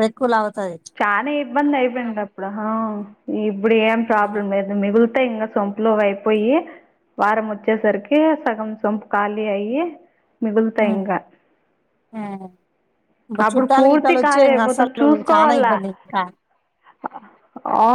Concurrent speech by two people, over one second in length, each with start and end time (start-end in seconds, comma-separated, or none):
13.5-15.7